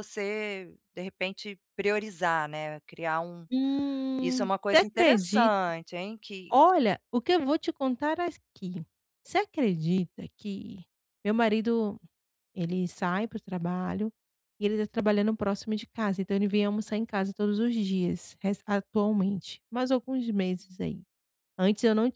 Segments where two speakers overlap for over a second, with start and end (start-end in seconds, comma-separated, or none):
4.2-5.5